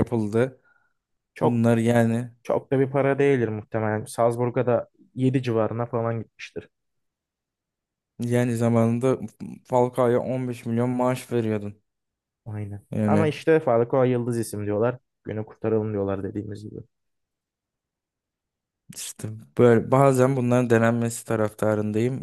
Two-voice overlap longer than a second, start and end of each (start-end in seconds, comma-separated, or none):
none